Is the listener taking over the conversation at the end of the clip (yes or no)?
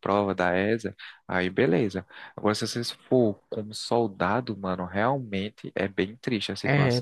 yes